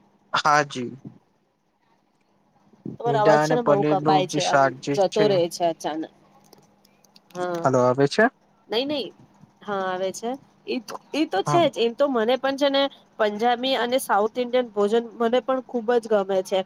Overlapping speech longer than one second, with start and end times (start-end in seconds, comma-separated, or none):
3.0-4.7